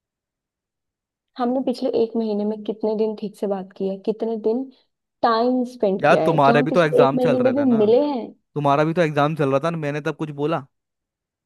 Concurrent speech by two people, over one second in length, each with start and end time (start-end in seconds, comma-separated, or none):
6.0-7.8